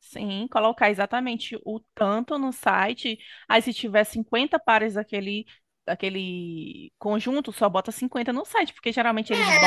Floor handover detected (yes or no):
yes